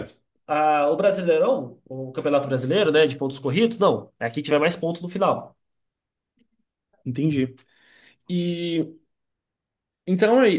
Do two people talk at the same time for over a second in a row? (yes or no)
no